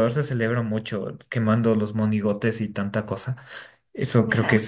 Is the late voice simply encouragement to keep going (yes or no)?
yes